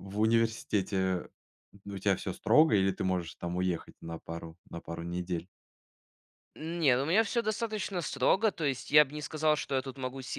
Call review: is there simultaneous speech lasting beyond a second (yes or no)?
no